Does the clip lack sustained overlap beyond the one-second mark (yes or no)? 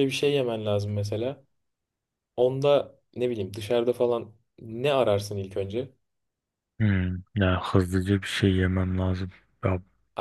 yes